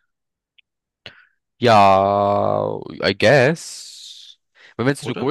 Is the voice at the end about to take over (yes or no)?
no